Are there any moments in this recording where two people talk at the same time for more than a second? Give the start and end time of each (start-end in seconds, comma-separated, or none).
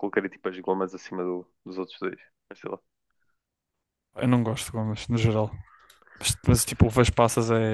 none